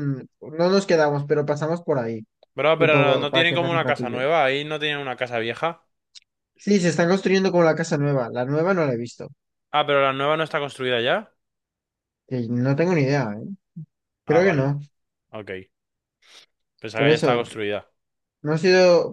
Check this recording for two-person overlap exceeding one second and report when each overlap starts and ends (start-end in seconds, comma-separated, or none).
2.8-4.2